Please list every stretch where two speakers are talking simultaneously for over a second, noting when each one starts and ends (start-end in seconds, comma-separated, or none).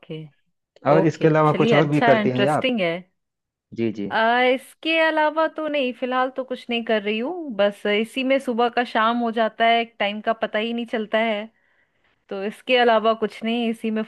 1.0-2.7